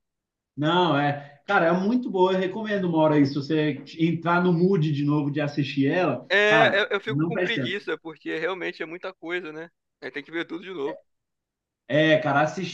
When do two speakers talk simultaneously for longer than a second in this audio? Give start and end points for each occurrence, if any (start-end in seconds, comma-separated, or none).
6.3-7.8